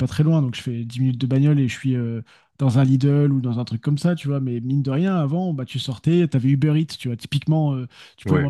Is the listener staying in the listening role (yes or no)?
yes